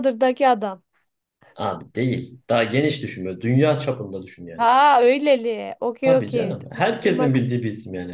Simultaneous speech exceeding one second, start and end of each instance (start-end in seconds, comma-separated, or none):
6.0-7.5